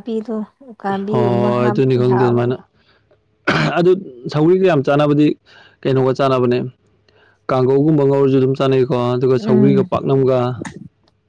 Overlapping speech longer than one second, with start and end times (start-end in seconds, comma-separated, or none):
1.1-2.5